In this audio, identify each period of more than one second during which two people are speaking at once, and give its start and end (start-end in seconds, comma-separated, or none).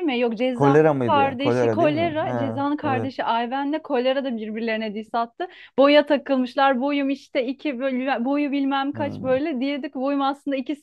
0.5-3.1